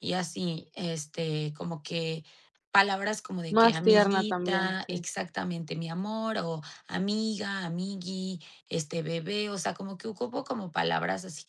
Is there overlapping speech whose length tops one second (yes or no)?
yes